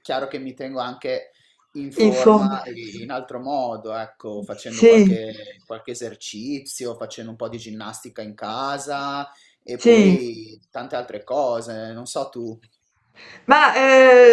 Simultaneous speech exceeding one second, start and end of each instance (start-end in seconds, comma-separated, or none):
none